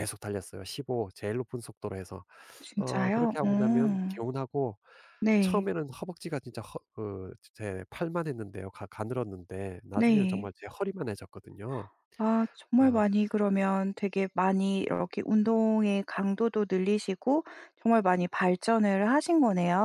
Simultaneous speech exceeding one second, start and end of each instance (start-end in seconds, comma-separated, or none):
2.8-4.2